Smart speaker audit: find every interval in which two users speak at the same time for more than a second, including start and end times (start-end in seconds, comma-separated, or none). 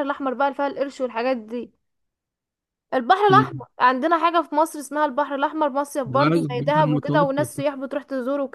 6.0-7.7